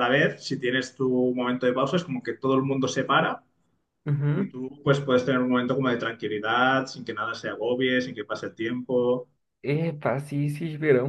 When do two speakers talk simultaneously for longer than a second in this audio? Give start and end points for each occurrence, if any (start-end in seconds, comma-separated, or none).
none